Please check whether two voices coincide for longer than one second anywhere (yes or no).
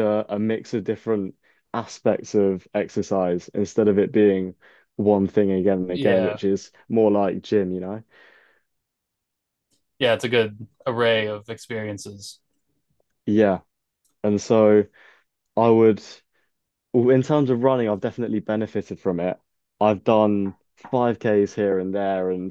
no